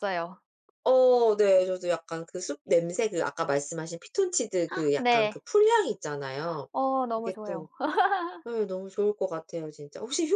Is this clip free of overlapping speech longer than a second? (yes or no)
yes